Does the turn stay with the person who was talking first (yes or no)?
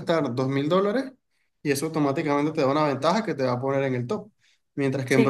yes